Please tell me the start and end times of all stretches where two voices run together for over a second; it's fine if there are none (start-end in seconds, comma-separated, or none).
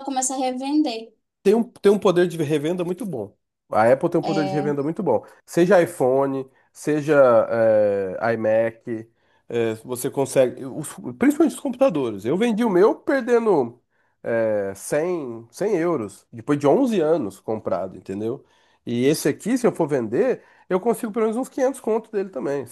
none